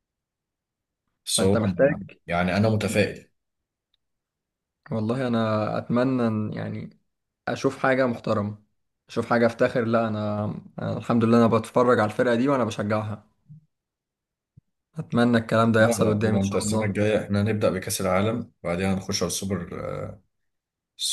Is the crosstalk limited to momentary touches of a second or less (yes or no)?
no